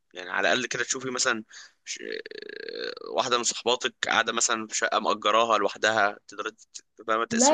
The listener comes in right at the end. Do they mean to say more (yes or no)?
yes